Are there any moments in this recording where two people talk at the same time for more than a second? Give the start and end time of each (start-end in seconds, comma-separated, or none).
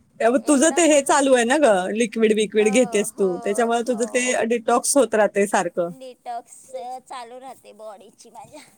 2.6-4.3